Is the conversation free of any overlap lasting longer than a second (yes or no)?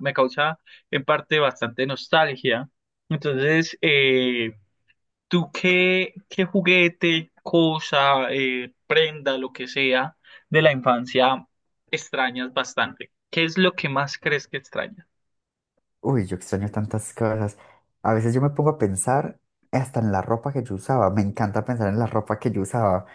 yes